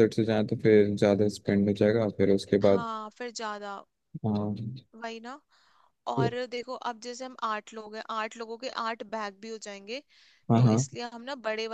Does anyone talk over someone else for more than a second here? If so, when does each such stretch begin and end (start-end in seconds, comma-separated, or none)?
none